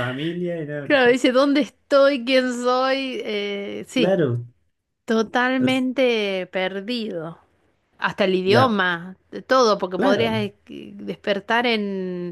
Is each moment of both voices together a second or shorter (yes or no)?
yes